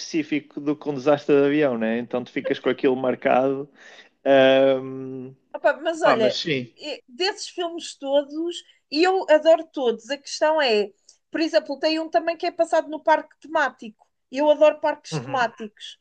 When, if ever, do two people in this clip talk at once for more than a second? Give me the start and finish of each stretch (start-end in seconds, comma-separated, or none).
none